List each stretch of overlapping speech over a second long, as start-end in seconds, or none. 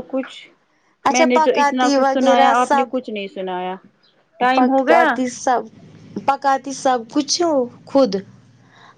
1.1-3.0